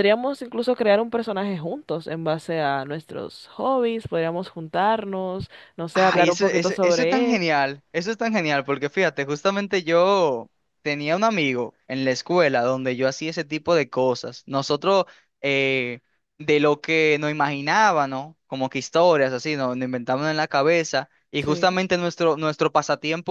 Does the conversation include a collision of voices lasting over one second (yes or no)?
yes